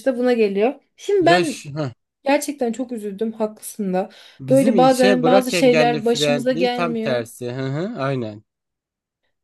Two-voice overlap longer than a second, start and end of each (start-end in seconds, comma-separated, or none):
4.5-7.2